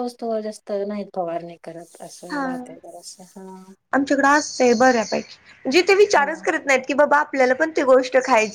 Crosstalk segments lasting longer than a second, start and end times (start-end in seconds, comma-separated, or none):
none